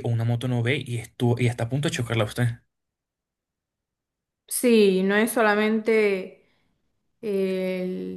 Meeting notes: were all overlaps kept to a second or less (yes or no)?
yes